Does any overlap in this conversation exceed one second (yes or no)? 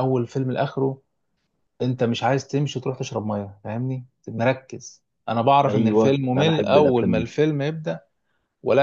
yes